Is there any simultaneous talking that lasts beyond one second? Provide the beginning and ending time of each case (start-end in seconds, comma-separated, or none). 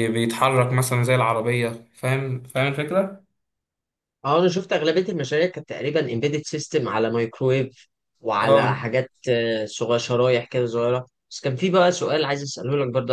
none